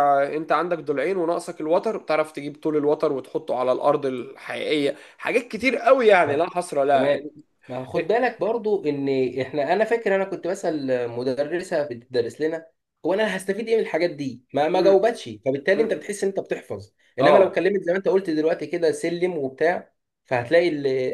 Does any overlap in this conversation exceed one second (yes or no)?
no